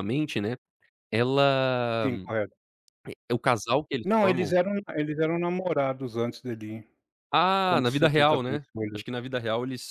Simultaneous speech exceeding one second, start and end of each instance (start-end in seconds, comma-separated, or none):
7.6-9.0